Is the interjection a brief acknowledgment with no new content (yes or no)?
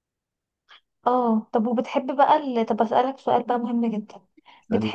yes